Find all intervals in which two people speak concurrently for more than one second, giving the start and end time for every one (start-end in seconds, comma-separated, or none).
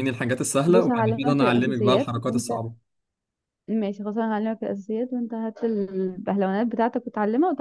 0.7-2.5